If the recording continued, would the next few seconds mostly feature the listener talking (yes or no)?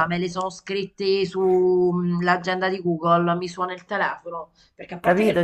yes